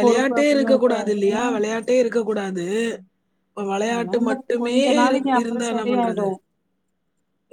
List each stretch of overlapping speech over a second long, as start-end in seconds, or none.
3.9-6.3